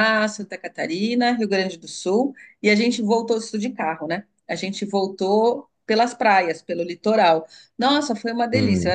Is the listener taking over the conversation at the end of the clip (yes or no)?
no